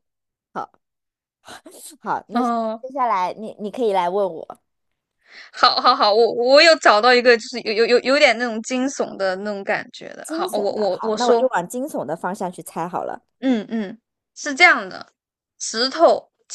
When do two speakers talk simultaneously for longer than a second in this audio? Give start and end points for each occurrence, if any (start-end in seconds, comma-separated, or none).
10.2-11.5